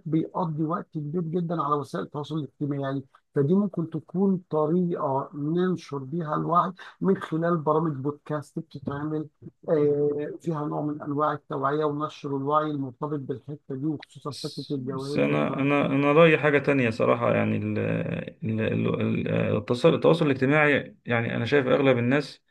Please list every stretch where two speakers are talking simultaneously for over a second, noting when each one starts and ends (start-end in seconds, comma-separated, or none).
14.3-15.7